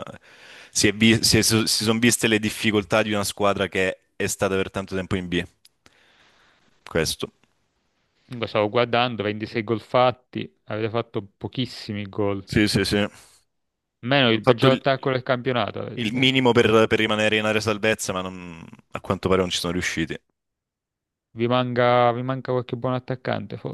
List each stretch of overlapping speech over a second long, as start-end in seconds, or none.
none